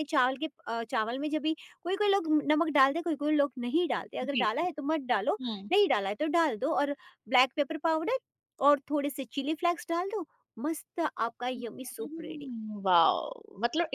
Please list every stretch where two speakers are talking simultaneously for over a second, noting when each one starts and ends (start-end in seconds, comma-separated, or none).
none